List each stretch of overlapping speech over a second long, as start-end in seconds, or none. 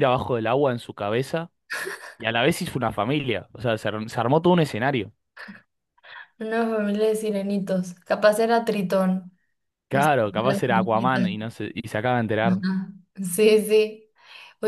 9.9-11.3